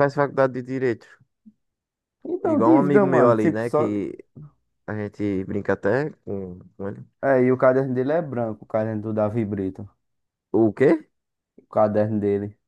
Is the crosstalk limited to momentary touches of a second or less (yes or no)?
no